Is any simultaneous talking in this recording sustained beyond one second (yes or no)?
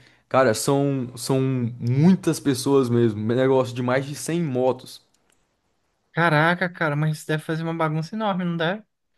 no